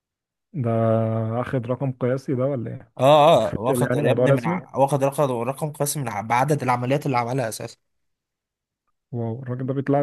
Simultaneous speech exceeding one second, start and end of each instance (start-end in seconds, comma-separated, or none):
3.4-4.6